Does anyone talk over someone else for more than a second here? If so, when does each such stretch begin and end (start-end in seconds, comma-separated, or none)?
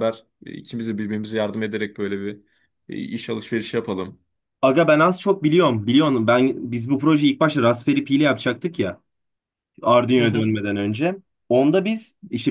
none